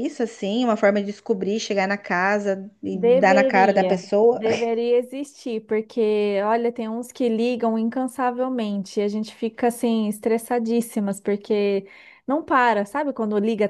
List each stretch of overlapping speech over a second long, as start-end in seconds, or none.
2.9-4.4